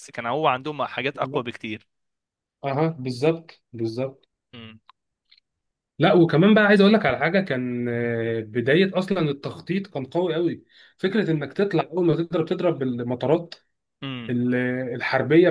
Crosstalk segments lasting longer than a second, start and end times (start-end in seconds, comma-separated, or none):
none